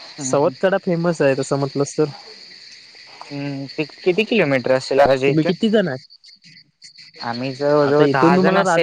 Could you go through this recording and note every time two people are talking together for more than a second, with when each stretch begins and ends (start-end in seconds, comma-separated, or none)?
none